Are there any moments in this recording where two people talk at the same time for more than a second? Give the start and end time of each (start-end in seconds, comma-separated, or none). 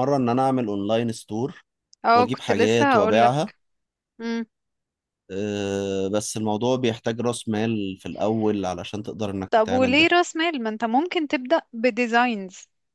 2.1-3.5